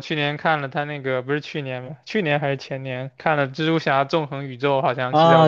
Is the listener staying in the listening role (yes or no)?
no